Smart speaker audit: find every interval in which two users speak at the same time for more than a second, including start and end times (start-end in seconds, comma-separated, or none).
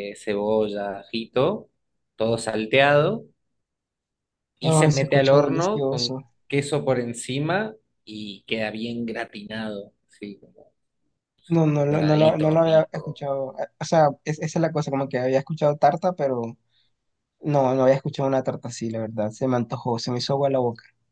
4.6-6.2, 11.9-13.2